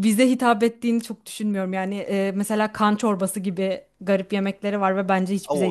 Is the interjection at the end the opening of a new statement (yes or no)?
yes